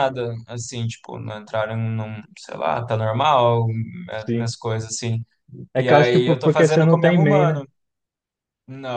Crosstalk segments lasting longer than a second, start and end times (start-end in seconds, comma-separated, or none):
5.8-7.6